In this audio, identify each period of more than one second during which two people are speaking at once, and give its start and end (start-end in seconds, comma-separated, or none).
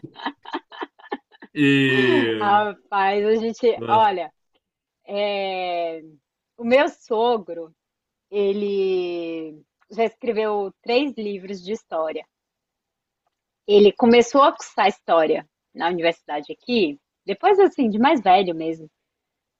none